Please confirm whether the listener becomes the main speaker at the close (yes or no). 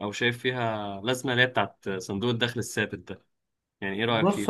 yes